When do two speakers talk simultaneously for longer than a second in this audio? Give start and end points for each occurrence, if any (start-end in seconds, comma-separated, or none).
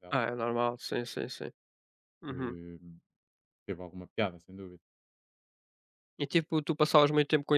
none